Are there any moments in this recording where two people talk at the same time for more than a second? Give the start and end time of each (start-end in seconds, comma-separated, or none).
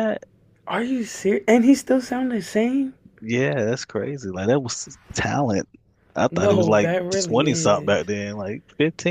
6.3-8.0